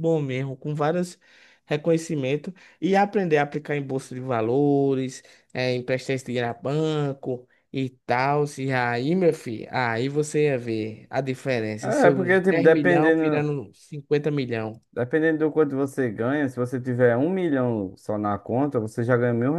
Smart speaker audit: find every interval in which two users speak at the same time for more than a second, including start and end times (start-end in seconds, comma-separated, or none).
11.8-13.5